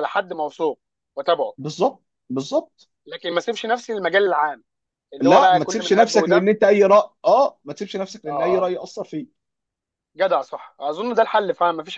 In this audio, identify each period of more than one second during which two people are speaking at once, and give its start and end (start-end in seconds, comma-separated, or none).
5.2-6.5